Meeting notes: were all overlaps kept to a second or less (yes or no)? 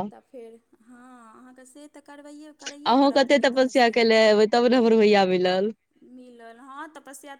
yes